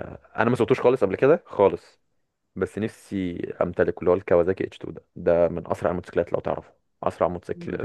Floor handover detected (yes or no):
no